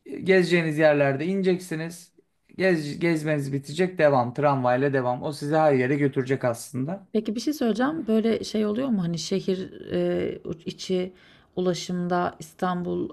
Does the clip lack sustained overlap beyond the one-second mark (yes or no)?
yes